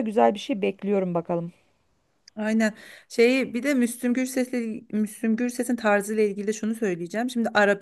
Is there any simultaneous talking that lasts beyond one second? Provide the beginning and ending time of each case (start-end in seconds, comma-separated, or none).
none